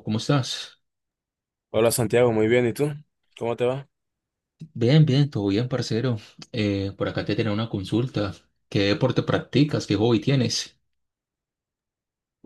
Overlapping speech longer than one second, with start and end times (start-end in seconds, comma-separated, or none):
none